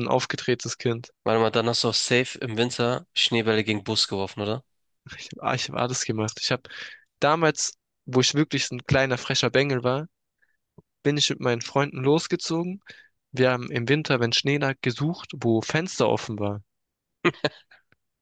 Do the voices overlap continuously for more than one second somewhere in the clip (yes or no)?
no